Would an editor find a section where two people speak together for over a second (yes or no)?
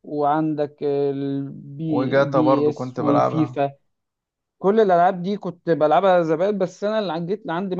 yes